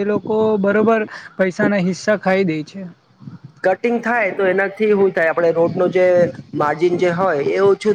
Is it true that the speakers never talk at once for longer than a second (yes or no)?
yes